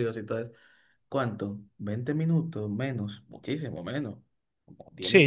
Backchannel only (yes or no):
no